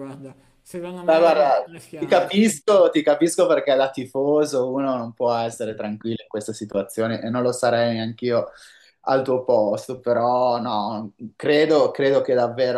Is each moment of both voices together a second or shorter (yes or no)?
no